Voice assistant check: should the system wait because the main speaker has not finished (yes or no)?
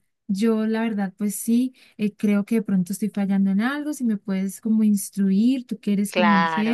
no